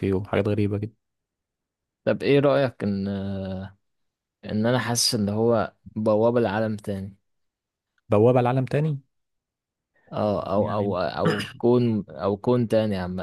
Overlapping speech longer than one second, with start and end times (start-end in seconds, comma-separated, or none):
none